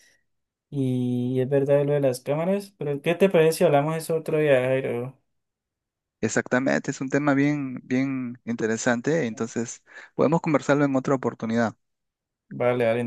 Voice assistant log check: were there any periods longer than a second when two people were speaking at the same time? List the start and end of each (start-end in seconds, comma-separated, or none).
none